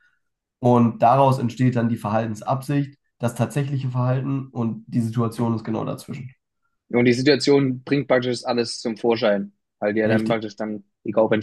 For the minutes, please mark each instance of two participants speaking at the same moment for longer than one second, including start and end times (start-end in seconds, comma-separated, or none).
none